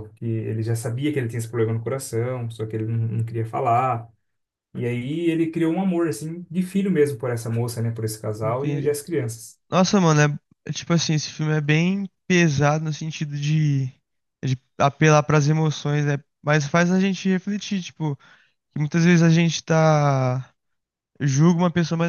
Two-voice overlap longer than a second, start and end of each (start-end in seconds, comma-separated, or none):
none